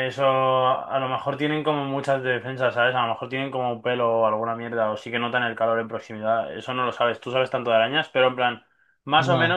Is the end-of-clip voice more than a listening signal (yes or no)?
no